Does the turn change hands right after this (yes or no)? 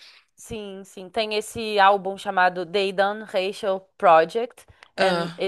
no